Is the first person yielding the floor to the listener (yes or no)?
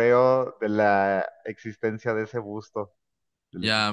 yes